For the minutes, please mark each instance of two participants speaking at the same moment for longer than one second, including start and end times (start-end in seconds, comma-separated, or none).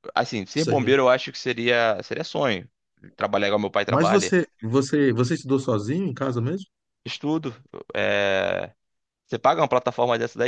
none